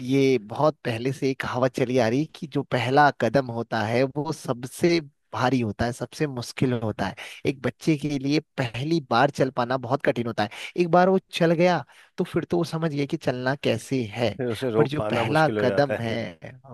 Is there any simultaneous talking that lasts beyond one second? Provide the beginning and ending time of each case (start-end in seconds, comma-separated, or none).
14.8-16.1